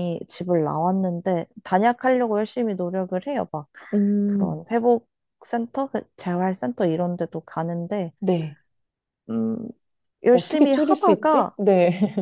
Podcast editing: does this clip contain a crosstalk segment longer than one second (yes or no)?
yes